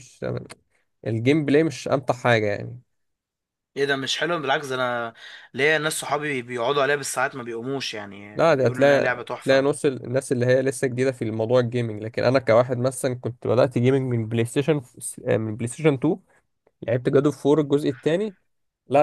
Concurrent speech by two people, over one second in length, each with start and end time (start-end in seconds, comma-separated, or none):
8.3-9.7